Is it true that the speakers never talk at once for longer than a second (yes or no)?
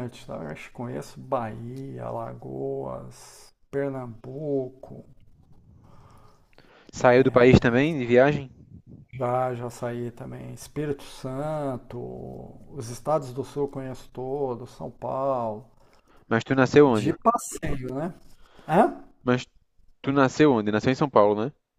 yes